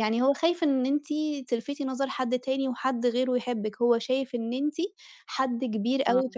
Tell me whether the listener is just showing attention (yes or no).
yes